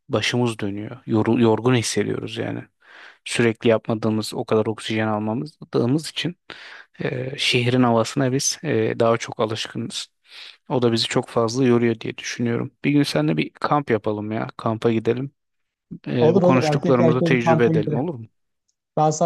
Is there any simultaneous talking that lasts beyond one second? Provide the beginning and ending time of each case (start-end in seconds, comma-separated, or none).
16.2-18.1